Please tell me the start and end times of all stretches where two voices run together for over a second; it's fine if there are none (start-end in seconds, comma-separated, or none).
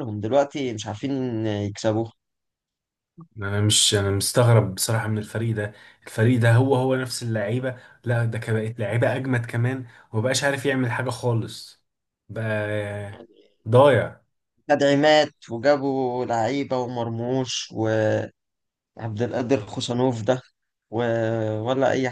none